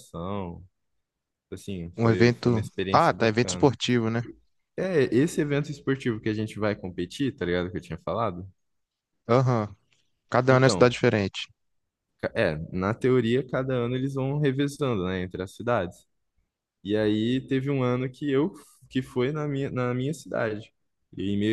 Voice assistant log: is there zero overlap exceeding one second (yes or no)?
no